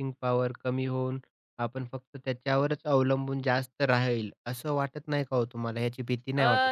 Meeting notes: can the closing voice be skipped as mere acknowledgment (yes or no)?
no